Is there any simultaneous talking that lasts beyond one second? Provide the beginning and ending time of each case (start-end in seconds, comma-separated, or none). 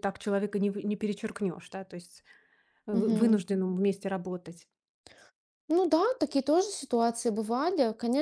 none